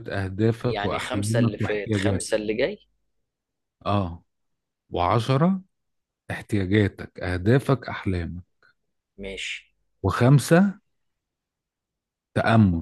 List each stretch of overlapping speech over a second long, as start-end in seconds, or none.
0.6-2.3